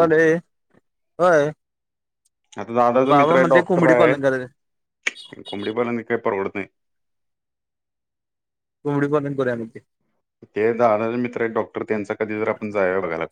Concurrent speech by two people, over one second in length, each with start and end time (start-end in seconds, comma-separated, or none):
3.1-4.5